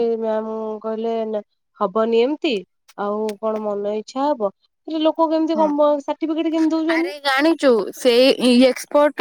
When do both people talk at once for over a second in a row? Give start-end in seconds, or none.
none